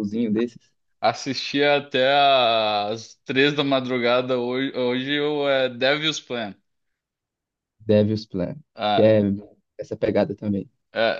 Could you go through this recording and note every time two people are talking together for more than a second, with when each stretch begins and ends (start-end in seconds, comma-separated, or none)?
none